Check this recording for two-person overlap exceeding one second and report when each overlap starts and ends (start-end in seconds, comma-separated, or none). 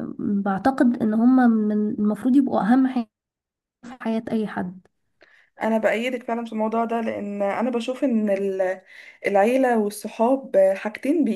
none